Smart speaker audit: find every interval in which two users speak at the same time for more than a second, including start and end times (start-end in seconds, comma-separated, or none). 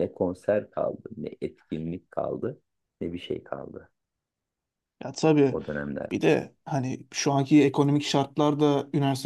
none